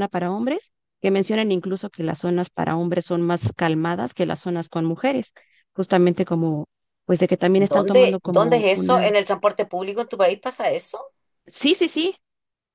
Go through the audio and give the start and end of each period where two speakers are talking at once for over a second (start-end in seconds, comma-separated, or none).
7.6-9.1